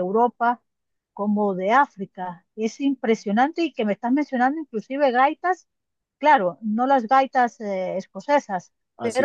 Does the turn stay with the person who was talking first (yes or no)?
yes